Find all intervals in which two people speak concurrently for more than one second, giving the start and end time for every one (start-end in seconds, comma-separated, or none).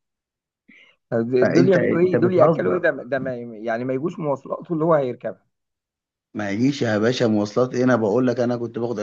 1.4-2.9